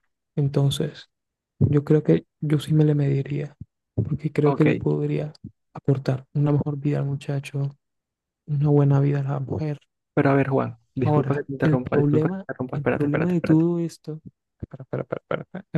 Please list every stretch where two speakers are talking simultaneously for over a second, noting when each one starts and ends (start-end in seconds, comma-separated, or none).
11.0-13.6